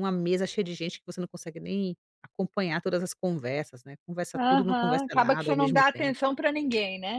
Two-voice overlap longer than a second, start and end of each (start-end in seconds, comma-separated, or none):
4.3-6.2